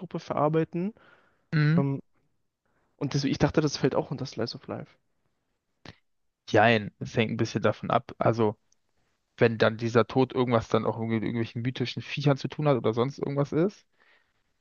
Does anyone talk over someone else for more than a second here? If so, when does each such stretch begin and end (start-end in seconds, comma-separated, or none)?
none